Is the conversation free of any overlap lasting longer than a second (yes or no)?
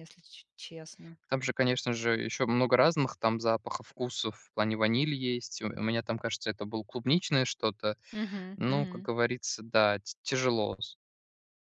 yes